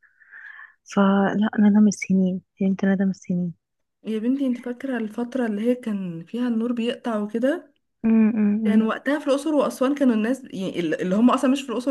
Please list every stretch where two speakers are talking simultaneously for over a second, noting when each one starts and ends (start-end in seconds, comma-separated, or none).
none